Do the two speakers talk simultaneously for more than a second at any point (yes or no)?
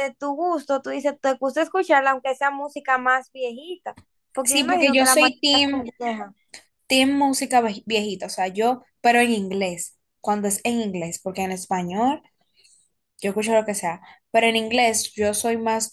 yes